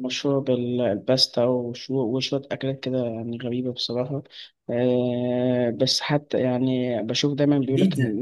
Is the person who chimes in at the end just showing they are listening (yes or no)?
yes